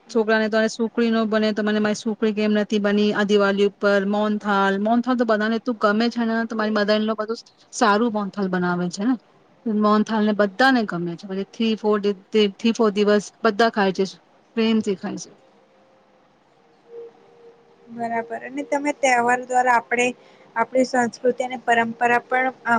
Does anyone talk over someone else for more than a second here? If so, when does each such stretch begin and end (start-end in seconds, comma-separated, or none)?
none